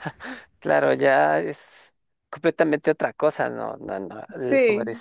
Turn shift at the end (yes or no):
no